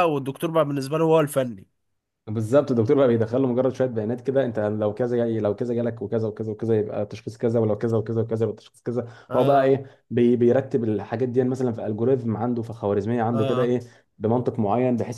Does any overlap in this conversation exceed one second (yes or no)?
no